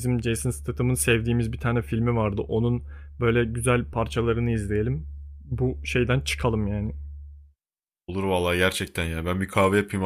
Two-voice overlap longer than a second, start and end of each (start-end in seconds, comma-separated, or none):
none